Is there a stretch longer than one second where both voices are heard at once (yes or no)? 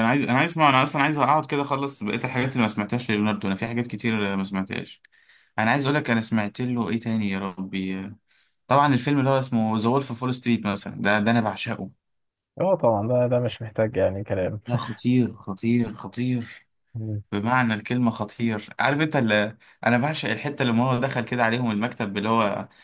no